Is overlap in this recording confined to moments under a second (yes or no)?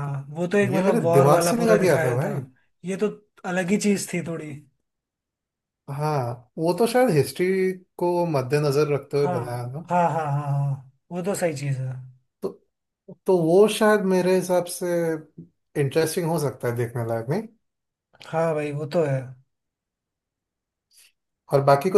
no